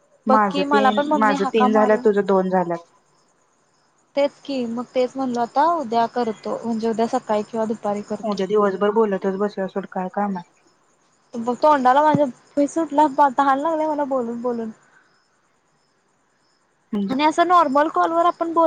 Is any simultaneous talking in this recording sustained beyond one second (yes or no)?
no